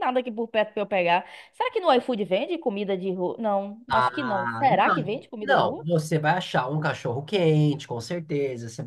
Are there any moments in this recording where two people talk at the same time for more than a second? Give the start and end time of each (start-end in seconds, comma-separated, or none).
3.9-5.9